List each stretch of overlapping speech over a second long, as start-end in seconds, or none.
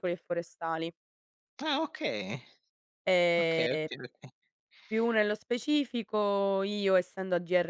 none